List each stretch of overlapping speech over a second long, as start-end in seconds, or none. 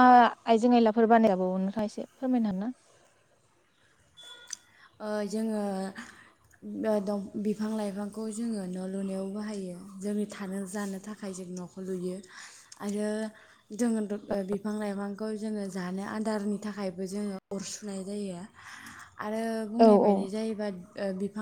none